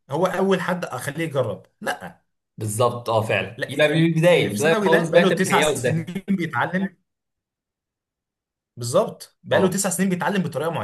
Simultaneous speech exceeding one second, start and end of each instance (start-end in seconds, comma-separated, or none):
3.6-6.2